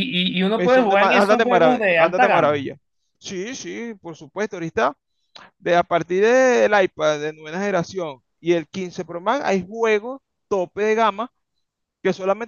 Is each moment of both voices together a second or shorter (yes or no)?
no